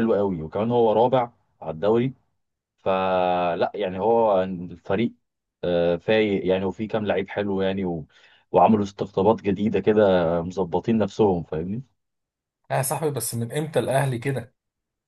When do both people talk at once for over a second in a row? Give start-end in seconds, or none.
none